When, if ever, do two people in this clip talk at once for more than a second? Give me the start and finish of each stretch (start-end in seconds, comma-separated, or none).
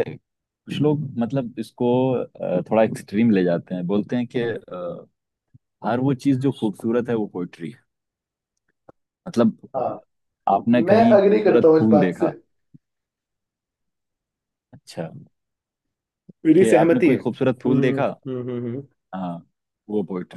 10.9-12.3, 16.6-18.1